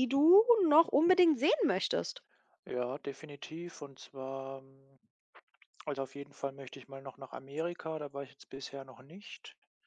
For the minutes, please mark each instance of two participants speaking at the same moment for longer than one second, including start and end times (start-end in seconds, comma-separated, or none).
none